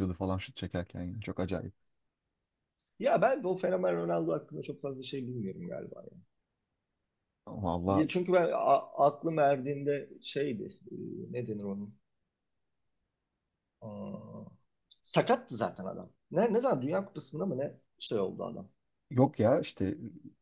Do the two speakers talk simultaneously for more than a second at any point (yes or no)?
no